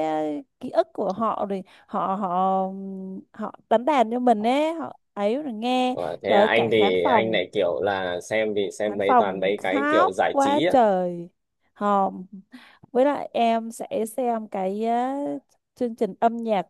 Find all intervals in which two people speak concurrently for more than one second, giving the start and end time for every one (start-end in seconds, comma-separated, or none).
5.9-7.5, 8.9-10.7